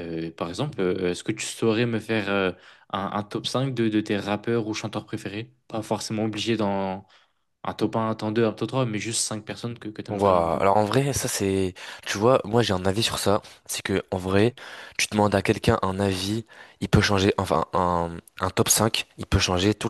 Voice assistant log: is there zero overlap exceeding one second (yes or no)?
yes